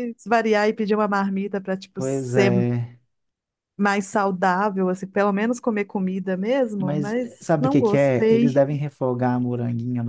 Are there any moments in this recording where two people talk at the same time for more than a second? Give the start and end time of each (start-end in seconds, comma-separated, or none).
6.8-8.6